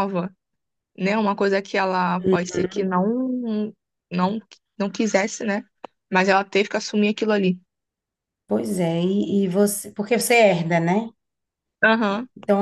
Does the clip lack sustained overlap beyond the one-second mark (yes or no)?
yes